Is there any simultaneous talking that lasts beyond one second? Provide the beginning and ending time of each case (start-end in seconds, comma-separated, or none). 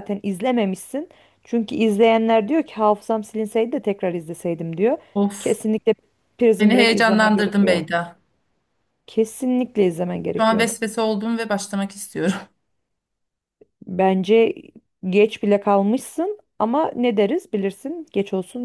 6.6-7.8